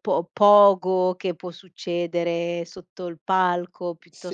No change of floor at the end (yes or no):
no